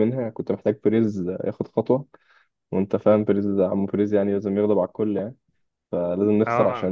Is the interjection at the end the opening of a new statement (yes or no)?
no